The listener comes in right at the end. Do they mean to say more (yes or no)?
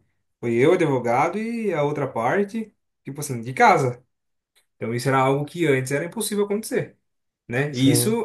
no